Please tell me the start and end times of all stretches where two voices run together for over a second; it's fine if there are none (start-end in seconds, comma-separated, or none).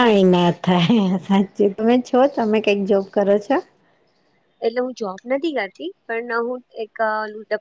none